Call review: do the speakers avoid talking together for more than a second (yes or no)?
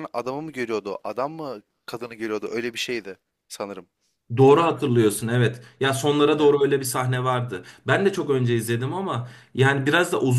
yes